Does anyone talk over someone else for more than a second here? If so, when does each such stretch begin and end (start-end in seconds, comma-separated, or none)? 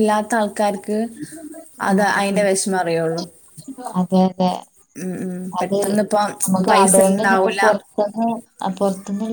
none